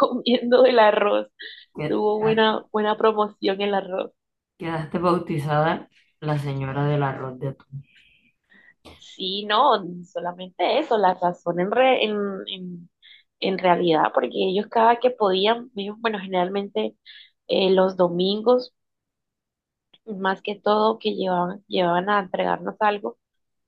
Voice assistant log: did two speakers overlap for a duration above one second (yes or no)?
no